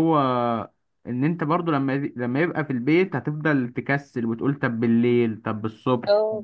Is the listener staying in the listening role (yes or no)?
no